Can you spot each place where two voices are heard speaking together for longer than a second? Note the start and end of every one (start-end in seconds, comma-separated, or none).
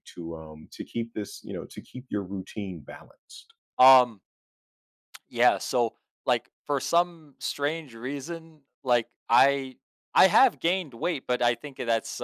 none